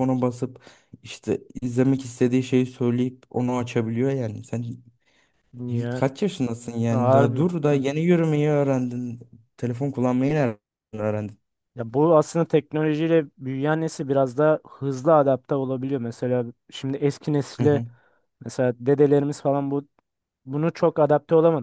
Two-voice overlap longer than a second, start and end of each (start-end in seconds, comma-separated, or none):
none